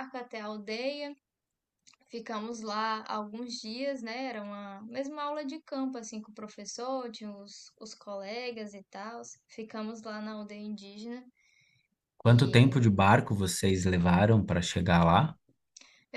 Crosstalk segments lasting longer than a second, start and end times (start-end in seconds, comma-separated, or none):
none